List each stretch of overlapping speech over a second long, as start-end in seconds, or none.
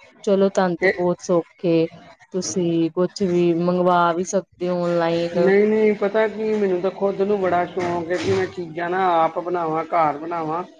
none